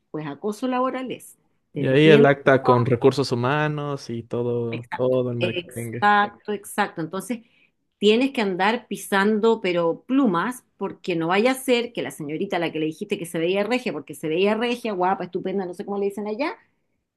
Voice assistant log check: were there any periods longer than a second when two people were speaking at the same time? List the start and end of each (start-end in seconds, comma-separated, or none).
4.7-6.1